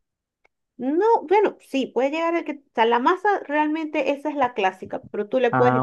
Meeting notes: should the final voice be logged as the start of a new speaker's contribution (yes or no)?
no